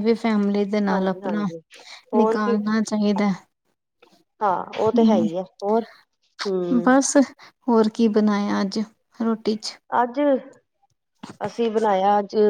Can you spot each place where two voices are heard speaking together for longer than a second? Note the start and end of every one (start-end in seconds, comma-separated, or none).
none